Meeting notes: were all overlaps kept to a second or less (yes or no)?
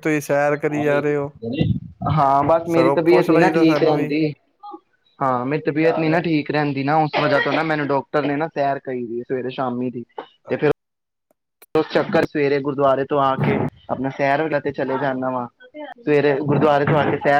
no